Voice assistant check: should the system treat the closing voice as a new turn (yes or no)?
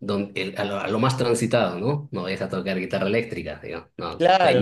yes